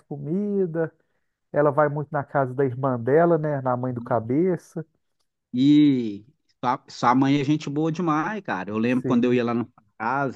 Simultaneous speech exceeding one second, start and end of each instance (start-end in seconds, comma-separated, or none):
none